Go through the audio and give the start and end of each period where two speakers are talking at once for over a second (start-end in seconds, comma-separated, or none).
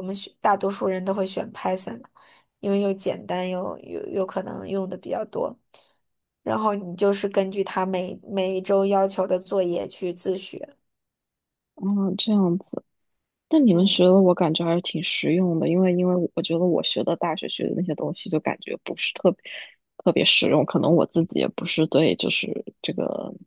none